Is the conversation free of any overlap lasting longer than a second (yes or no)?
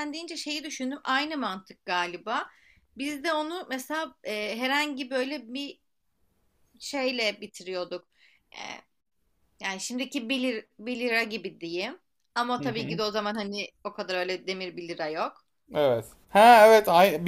yes